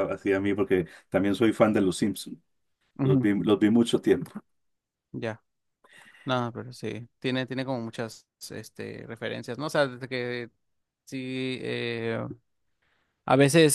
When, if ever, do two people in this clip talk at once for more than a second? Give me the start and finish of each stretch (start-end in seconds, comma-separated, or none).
none